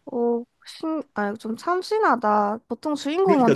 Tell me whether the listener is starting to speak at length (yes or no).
yes